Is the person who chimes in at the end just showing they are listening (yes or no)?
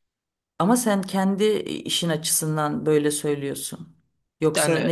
yes